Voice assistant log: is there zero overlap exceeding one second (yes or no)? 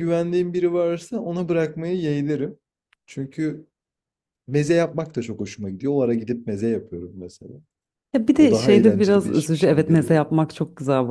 no